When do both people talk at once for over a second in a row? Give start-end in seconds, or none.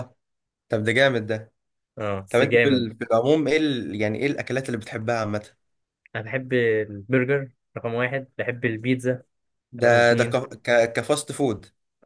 none